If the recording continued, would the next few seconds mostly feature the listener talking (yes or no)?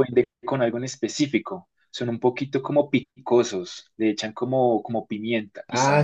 yes